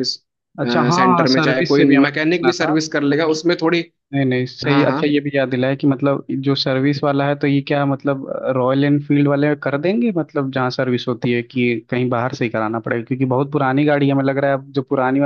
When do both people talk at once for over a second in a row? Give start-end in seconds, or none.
0.9-2.8